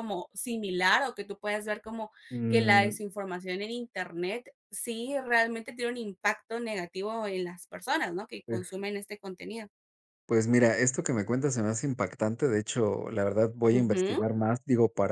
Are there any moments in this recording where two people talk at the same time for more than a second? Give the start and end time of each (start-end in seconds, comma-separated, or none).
none